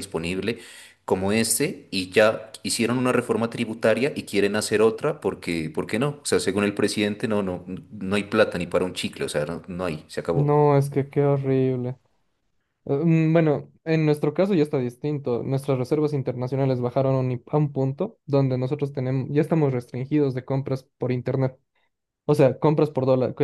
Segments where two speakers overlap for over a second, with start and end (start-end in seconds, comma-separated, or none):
none